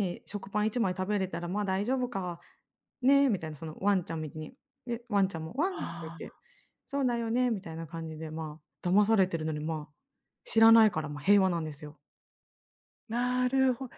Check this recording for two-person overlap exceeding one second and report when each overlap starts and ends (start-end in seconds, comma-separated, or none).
none